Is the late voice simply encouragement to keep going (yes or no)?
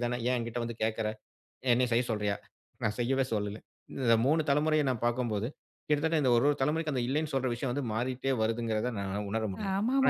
no